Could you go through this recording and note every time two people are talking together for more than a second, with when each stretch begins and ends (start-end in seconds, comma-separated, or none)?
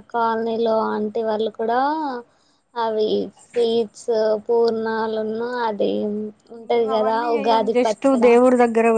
none